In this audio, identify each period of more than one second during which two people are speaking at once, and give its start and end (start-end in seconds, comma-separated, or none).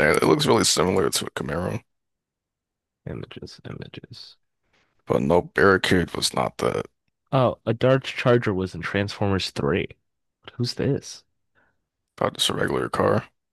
none